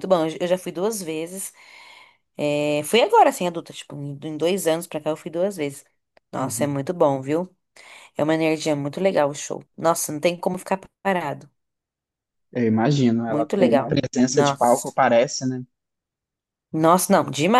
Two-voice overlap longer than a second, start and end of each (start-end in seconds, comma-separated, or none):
13.3-14.9